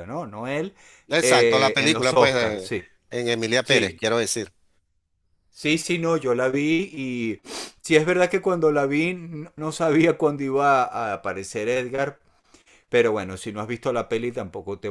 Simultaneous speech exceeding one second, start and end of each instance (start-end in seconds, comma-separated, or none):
1.2-2.7